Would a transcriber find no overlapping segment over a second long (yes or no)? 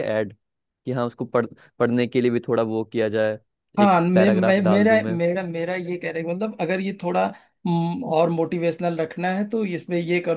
no